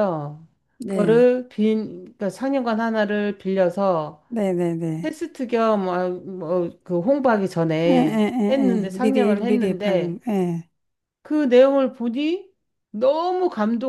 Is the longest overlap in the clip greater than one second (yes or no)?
yes